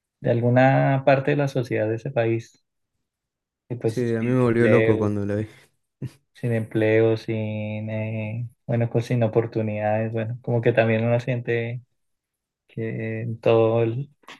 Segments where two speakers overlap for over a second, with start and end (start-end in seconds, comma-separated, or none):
3.8-5.1